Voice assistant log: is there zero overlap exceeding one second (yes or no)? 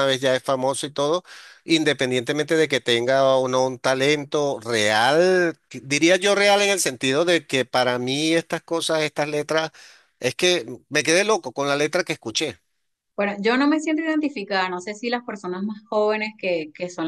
yes